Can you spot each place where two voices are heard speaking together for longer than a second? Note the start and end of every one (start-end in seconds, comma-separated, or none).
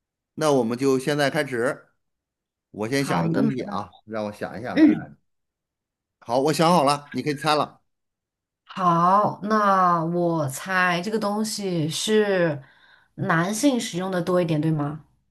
none